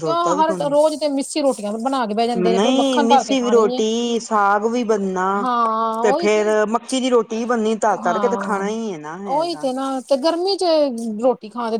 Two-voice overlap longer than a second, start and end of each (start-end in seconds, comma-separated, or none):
2.5-3.8